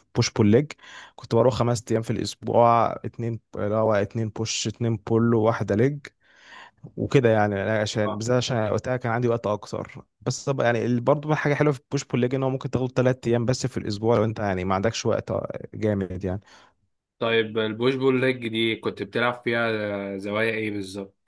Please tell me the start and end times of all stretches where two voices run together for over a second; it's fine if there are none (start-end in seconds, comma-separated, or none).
none